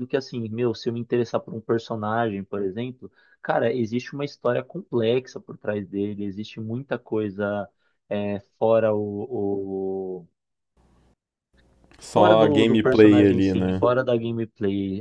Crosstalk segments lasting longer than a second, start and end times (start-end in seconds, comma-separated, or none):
12.1-13.8